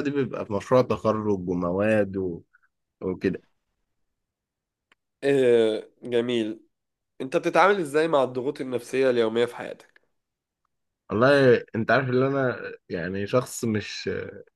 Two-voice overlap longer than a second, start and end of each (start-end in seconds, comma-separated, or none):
none